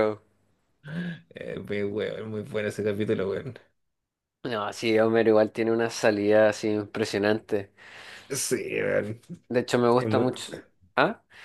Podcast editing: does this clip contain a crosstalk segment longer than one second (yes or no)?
no